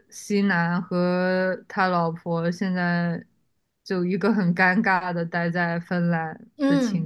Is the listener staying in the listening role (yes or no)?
no